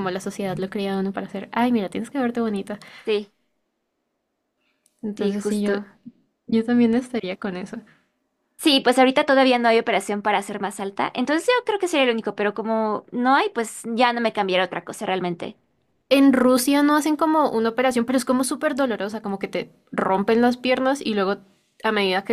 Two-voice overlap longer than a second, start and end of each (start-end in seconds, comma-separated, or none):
none